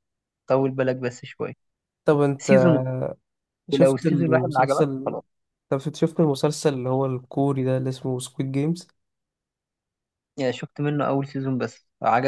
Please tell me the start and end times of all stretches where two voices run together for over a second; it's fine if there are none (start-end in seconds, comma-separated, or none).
3.7-5.2